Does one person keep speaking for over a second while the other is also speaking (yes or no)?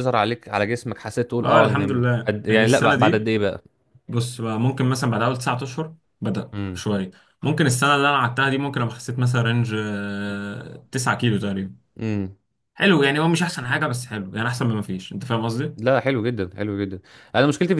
yes